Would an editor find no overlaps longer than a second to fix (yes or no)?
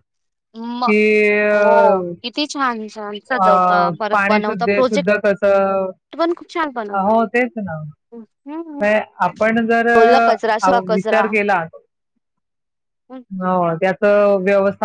no